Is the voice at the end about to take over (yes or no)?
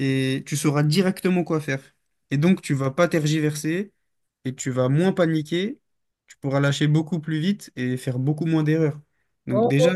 no